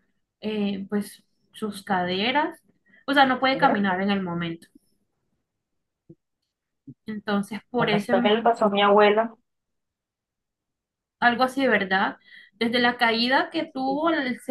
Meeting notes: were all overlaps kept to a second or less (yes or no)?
yes